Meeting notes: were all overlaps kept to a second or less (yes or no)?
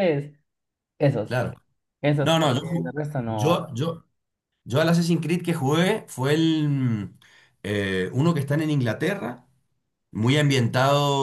no